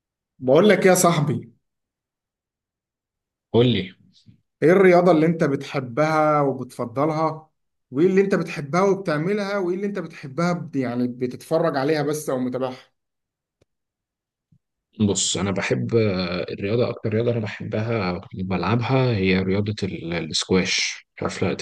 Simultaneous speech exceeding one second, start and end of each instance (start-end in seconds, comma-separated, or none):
none